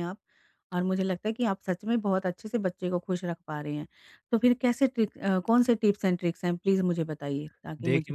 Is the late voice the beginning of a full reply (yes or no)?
yes